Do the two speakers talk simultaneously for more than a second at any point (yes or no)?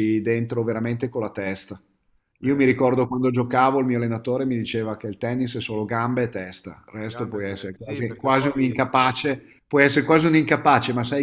yes